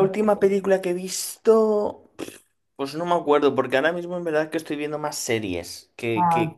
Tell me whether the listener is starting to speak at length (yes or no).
no